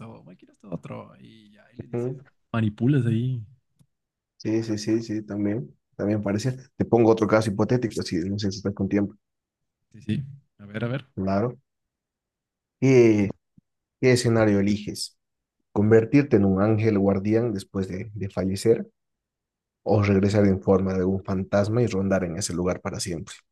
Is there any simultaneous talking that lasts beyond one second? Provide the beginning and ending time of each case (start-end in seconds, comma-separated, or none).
none